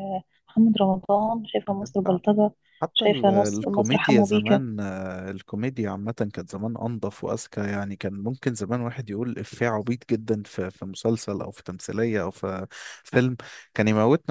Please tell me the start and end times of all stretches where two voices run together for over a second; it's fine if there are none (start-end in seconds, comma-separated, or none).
2.9-4.6